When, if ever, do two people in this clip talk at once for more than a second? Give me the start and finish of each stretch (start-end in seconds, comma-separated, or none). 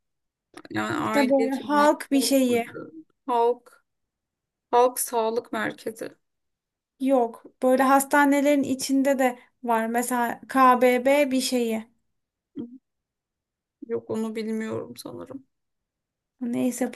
1.0-2.7